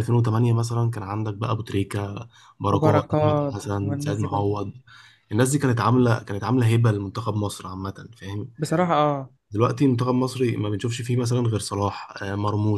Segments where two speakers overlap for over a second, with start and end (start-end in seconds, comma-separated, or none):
2.7-4.4